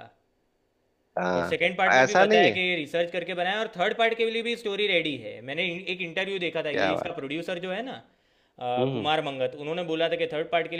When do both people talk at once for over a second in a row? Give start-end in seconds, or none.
1.4-2.6